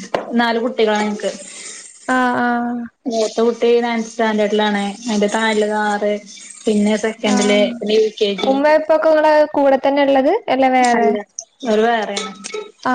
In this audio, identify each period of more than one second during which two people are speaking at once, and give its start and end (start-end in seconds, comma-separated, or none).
none